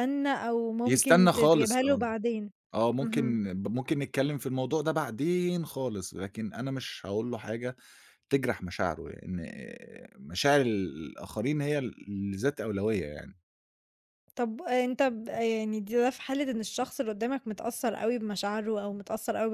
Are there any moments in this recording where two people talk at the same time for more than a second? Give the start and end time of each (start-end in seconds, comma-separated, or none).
0.8-2.1